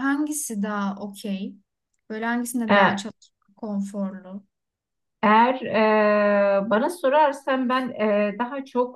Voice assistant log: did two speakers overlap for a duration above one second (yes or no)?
no